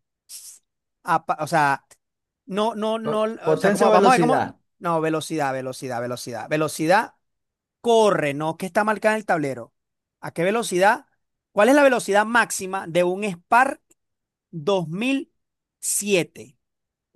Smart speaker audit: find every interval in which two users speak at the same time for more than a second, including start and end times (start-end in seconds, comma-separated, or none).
3.0-4.6